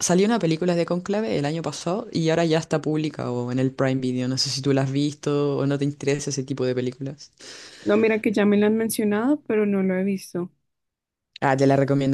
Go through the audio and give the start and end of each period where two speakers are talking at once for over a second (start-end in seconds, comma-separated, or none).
none